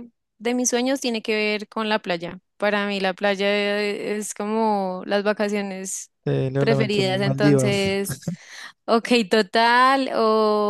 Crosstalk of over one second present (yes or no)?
yes